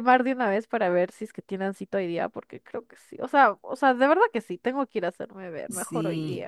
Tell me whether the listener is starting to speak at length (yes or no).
yes